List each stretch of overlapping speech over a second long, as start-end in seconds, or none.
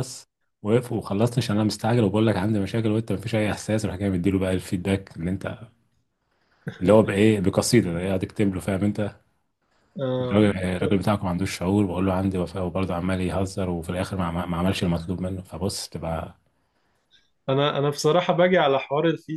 none